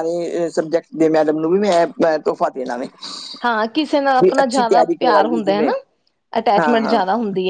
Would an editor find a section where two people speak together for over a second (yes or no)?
yes